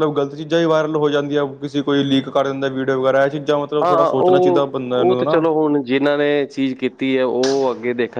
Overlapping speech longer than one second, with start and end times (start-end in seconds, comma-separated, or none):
3.8-5.4